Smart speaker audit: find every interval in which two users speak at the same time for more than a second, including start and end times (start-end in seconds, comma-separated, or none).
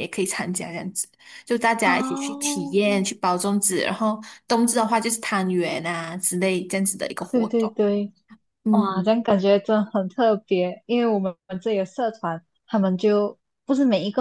1.8-3.0